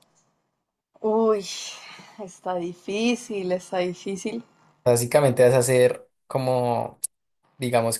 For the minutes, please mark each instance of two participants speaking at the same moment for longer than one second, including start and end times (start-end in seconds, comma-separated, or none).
none